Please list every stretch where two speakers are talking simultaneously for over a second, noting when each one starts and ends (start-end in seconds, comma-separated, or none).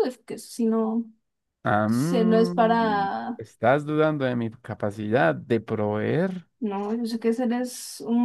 1.9-3.4